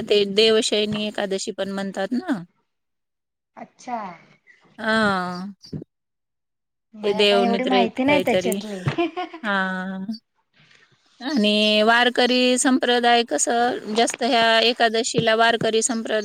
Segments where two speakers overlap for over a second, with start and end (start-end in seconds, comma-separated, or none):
7.0-8.5